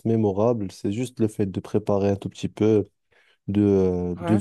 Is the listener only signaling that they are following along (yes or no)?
yes